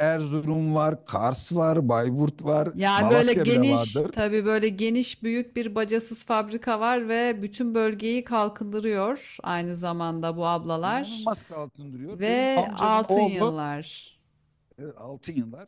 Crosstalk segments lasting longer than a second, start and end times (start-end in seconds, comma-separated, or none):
2.7-4.1, 12.1-13.6